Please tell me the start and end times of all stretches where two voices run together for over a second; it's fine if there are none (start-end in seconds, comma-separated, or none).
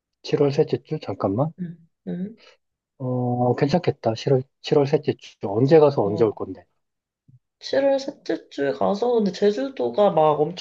none